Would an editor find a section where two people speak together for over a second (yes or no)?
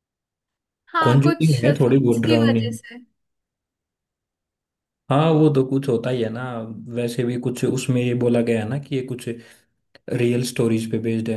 yes